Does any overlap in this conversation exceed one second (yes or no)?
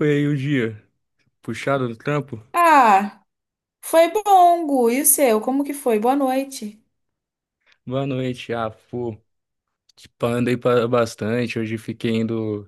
no